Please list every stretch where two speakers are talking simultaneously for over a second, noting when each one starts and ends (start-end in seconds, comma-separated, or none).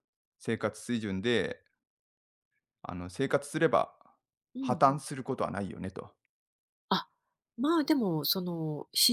none